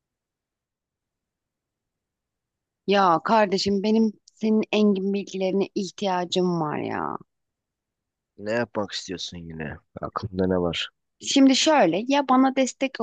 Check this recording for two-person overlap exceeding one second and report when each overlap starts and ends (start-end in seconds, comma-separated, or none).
none